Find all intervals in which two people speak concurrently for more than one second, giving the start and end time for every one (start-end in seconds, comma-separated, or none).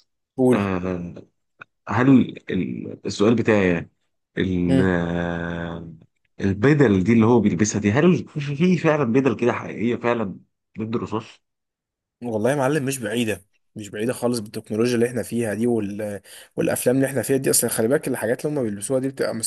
none